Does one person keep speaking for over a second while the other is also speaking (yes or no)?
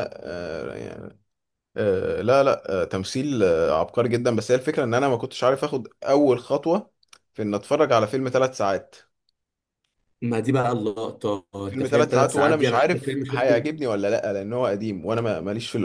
yes